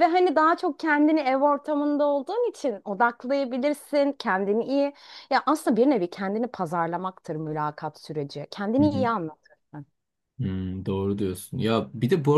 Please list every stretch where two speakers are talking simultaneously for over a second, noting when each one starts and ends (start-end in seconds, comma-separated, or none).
none